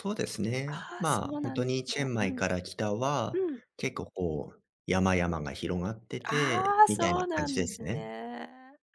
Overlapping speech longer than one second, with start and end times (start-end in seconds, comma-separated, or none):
0.7-2.4, 6.3-8.1